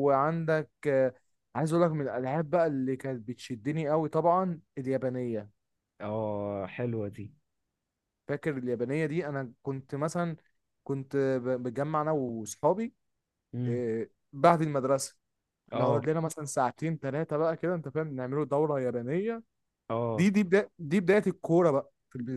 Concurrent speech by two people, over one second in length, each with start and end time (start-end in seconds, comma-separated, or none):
none